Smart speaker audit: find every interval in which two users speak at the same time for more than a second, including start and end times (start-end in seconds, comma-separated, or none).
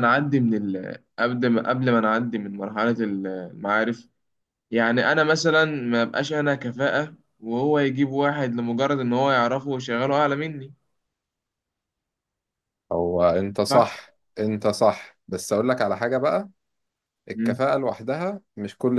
none